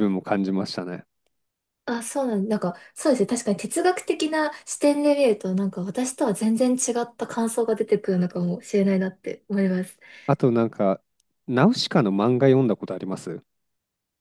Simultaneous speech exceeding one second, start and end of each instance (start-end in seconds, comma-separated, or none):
none